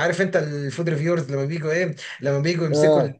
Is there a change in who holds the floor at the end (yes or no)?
no